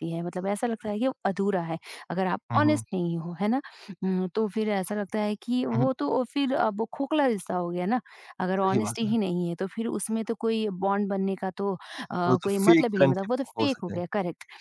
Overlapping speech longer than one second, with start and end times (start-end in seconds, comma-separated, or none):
12.4-14.0